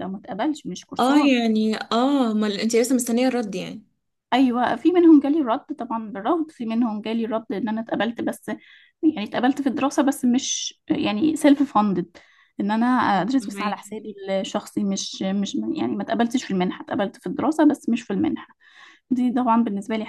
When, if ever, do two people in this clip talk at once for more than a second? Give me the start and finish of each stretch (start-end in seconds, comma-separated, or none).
none